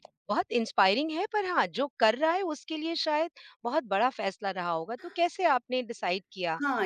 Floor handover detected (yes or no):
yes